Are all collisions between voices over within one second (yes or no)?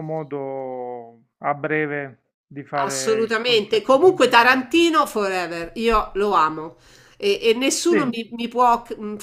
no